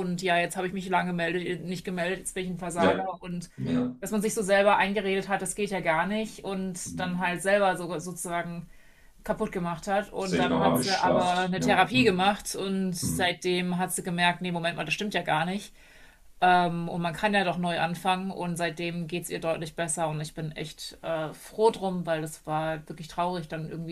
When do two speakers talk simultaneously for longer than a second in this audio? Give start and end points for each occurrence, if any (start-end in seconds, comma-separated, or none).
10.2-12.3